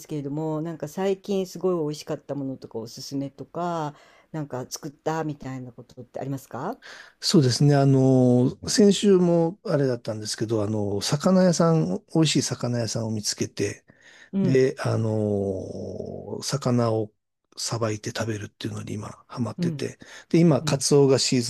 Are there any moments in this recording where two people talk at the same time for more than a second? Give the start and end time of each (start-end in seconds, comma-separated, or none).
none